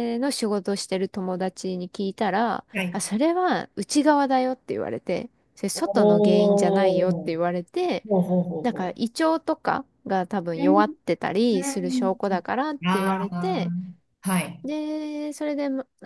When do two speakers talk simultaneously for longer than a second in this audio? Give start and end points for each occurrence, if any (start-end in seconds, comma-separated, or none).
11.5-13.7